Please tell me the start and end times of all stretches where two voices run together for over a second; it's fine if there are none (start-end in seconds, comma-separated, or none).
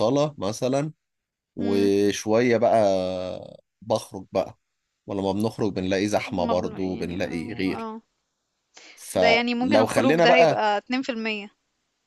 6.4-7.9, 9.2-10.6